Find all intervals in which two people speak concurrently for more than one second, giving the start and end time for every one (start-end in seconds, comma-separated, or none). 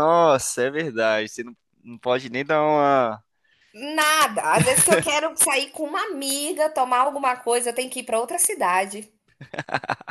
none